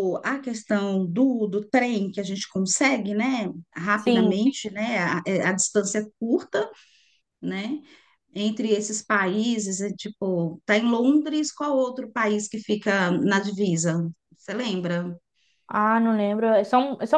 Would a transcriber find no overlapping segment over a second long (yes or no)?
yes